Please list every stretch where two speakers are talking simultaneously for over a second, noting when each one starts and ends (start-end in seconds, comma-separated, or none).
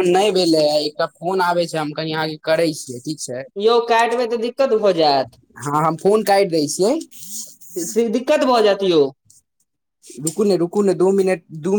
none